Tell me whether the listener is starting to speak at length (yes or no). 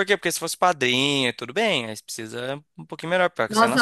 yes